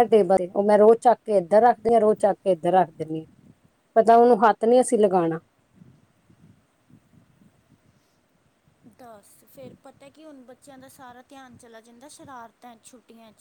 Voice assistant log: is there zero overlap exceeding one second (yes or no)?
yes